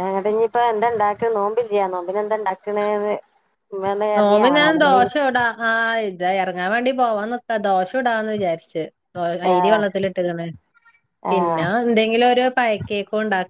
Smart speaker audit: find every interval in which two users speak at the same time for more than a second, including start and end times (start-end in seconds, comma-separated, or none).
none